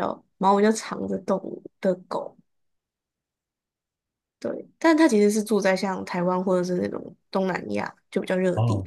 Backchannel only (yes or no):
no